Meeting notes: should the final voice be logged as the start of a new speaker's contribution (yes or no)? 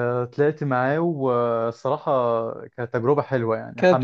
no